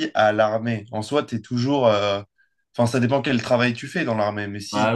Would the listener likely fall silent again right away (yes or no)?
no